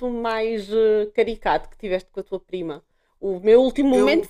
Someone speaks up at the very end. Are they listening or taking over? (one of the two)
listening